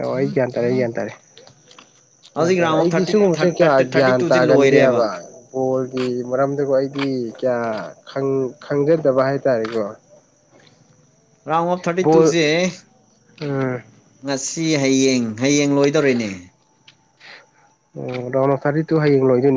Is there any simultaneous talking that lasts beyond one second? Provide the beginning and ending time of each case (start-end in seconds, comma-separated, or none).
2.4-5.0